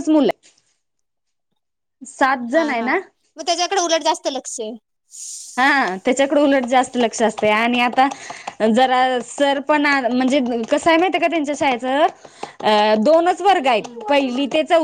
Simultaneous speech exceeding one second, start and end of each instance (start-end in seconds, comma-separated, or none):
none